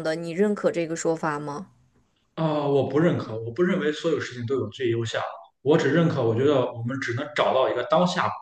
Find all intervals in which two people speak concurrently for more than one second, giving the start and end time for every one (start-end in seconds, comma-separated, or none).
none